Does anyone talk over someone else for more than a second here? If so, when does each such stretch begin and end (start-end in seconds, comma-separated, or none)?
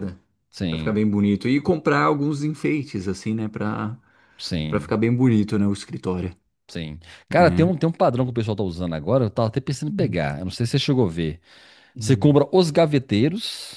none